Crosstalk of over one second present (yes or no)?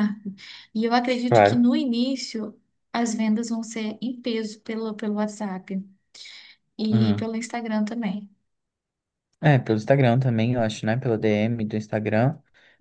no